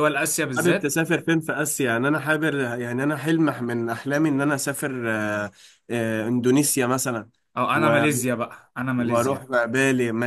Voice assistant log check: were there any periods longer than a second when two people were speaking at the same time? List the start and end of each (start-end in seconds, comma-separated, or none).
none